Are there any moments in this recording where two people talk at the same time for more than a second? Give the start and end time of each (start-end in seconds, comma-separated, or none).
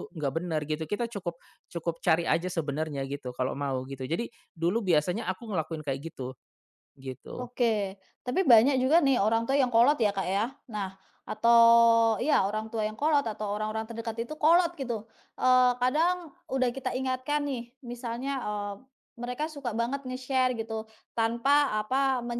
none